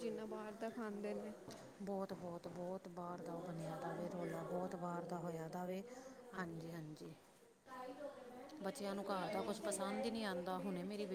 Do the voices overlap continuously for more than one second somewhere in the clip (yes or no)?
no